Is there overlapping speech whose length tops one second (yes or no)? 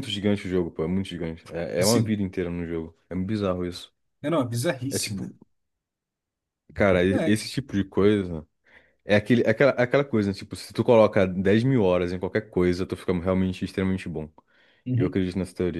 no